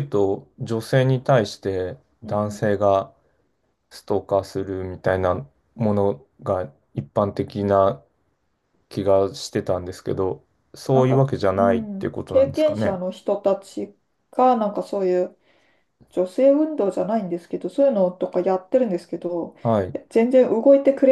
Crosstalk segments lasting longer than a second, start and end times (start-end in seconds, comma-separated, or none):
10.9-13.0